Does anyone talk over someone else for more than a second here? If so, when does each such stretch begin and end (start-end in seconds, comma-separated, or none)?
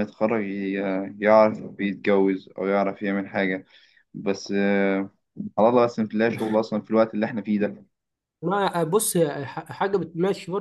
none